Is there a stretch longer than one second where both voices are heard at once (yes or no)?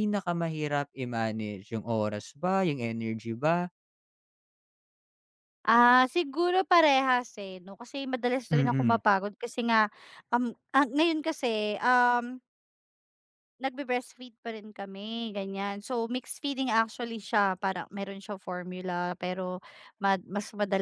no